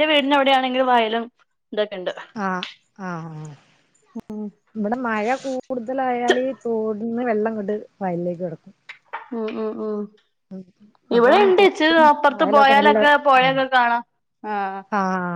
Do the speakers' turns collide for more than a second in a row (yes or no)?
no